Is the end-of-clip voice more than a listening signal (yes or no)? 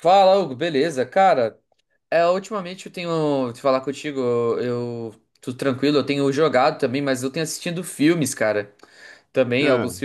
no